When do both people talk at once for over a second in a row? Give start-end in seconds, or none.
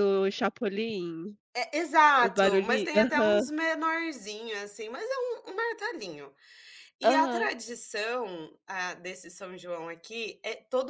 2.2-3.4